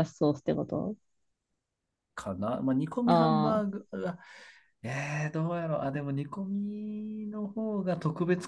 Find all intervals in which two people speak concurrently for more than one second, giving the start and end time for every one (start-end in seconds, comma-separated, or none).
none